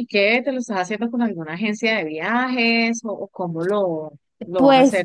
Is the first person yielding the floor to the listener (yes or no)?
yes